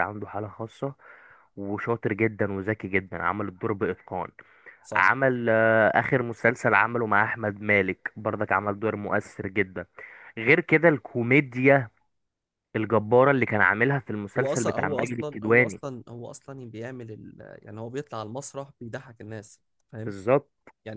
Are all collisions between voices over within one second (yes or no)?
no